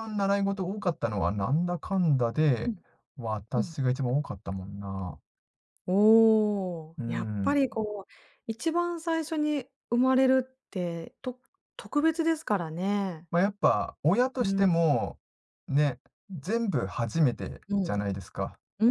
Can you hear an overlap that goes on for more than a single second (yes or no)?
no